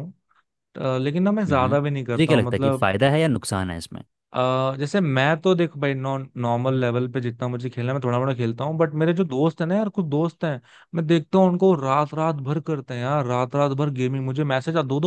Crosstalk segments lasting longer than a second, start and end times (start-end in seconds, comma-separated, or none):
1.5-2.9